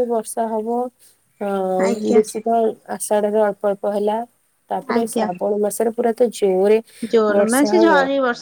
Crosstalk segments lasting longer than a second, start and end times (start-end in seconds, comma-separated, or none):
none